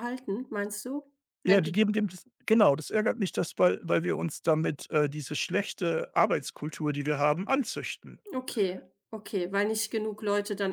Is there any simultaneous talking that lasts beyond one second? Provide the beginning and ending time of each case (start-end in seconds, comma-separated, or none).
none